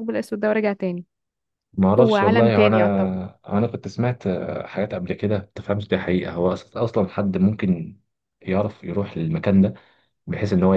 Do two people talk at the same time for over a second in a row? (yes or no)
yes